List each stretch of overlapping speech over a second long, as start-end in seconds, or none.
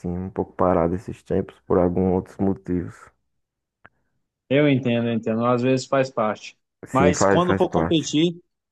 6.9-8.1